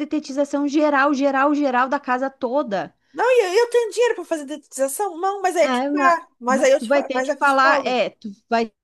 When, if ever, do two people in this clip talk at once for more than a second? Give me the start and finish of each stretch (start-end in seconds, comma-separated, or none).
5.6-8.0